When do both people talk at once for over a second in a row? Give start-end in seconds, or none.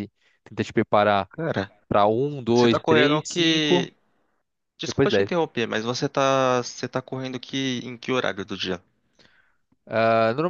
2.5-3.9